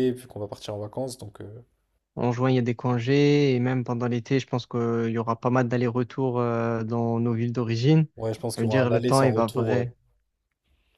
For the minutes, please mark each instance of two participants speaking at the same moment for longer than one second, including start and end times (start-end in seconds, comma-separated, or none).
8.6-9.8